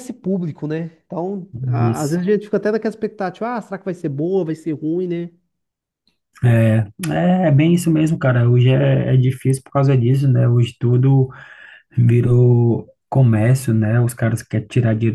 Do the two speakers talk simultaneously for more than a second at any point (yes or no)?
no